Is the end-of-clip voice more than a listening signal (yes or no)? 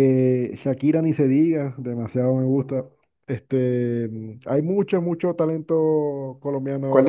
yes